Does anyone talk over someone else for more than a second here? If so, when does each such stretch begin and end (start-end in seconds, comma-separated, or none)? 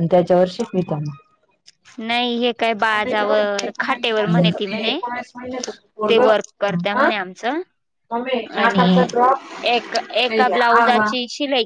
3.1-5.0